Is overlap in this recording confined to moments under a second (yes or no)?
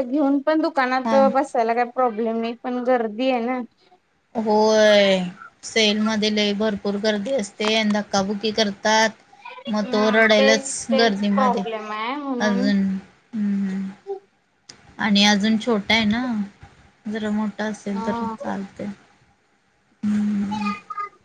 no